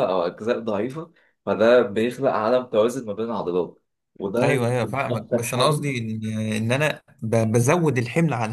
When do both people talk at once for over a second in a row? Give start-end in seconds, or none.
4.4-5.8